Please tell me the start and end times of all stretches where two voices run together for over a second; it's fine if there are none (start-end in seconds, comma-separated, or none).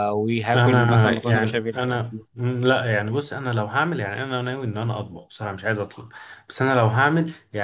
0.6-1.8